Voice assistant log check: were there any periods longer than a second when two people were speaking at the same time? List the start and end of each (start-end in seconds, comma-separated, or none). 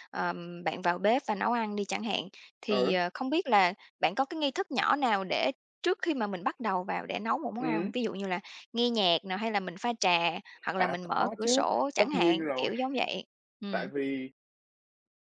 10.8-12.7